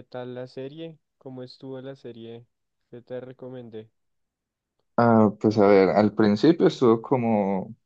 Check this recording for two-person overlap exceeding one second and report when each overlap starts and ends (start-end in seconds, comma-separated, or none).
none